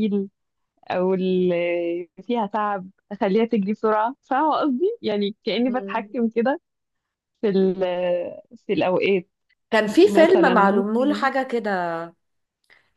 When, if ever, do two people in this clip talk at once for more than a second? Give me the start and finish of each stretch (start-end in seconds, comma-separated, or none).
10.0-11.3